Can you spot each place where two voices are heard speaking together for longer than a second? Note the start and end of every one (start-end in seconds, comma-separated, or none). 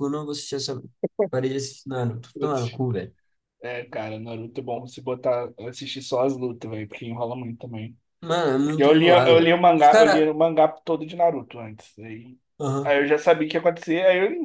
8.6-10.3